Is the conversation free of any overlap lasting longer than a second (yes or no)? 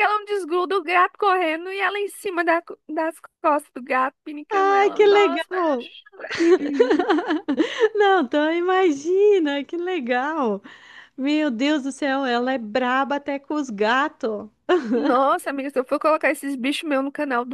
no